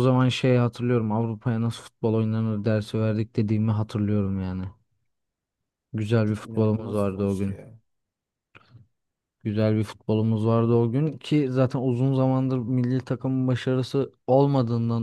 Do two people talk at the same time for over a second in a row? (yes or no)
yes